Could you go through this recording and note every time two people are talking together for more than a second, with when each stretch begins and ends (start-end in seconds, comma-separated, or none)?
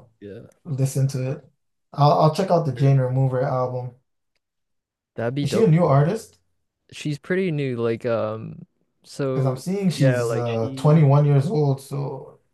9.3-11.1